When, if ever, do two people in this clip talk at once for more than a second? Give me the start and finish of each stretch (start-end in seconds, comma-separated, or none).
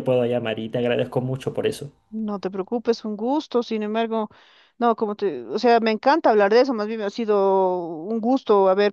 none